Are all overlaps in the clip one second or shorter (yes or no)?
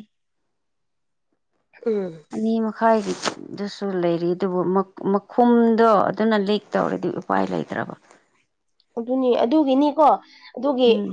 yes